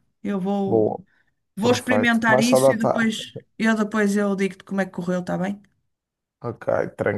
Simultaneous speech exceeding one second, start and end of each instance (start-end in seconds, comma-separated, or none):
1.6-3.1